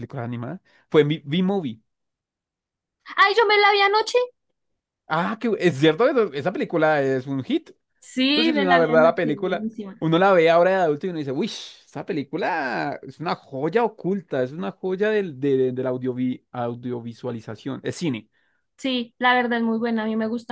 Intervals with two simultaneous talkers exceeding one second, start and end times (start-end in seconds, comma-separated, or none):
8.3-10.0